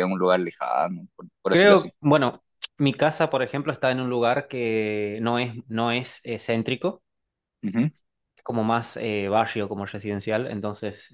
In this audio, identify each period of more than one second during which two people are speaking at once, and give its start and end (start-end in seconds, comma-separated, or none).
none